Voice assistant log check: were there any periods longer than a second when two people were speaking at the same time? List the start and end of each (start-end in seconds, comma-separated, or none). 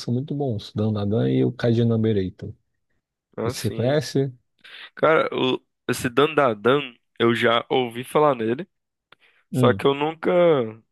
none